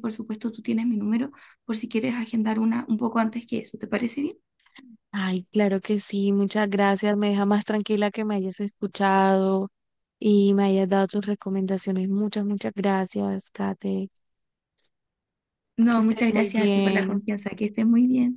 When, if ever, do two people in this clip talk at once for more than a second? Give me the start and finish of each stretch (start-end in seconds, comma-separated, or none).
15.9-17.2